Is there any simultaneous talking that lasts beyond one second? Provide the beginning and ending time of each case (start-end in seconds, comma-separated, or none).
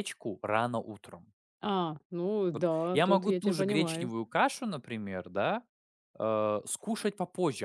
2.9-4.1